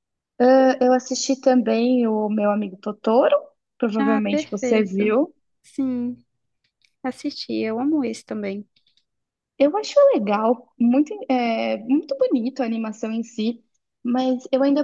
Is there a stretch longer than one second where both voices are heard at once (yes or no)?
yes